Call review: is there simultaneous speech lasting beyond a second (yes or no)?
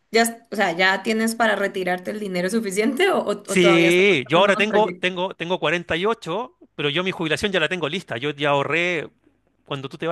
yes